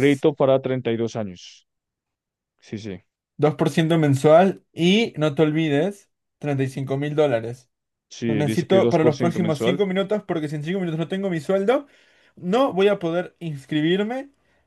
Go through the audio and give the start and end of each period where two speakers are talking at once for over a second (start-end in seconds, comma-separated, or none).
8.3-9.8